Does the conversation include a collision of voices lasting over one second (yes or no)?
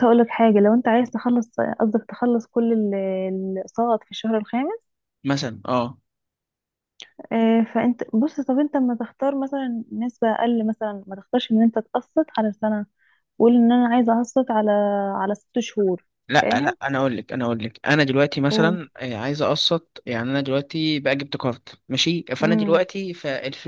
no